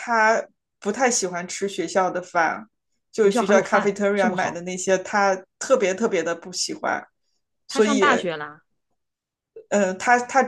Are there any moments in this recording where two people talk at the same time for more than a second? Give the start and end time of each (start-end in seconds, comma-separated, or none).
3.2-4.6